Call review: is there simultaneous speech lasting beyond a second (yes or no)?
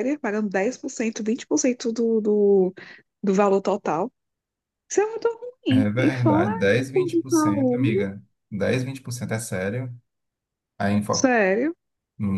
yes